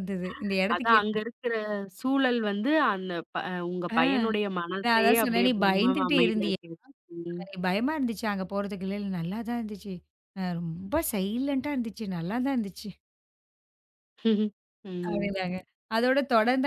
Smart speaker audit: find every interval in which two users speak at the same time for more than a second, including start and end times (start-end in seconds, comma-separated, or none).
4.8-6.6